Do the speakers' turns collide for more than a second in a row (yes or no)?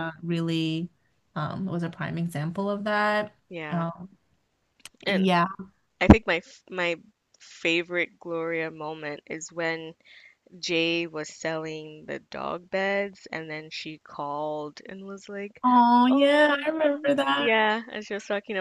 yes